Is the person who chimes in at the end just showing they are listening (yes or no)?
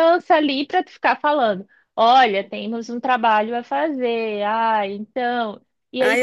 no